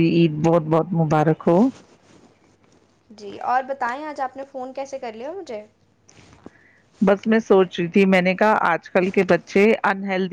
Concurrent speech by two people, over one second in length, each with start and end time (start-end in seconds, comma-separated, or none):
none